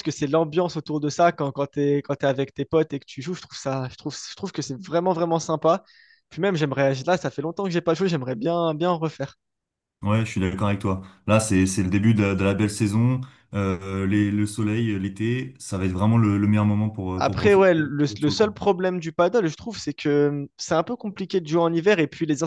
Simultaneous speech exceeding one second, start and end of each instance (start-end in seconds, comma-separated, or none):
17.2-18.6